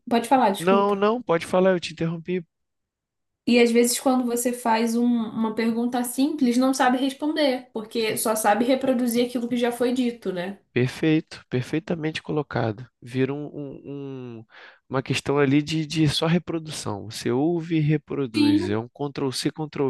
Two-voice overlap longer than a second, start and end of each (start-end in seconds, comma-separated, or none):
none